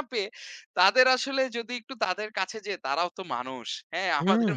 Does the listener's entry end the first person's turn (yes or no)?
no